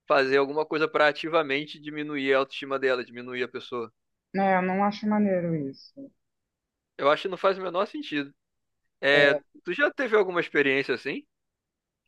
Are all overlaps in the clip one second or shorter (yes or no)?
yes